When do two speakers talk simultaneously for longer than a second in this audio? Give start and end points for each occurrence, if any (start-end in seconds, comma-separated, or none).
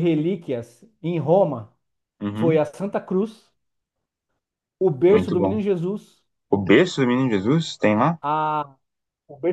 none